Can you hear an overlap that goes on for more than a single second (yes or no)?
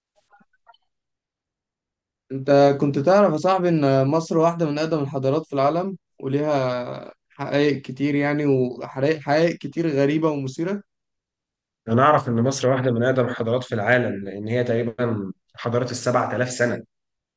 no